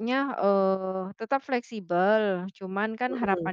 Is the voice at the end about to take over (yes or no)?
no